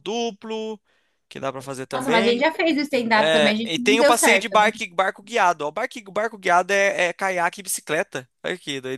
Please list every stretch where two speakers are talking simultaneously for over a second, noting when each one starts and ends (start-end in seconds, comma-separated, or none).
3.1-4.7